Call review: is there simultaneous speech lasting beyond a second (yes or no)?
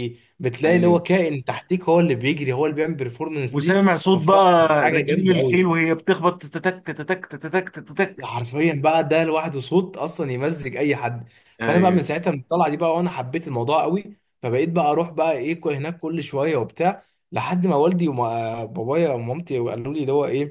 yes